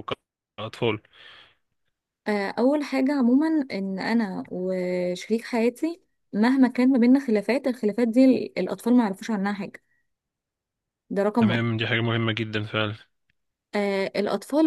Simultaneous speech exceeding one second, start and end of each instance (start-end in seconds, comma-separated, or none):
none